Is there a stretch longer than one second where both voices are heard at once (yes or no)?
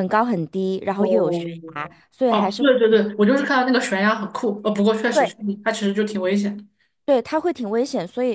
no